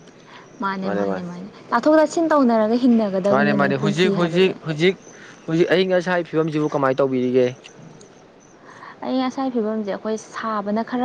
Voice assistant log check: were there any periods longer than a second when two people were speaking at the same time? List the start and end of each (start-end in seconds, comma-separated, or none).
3.3-4.5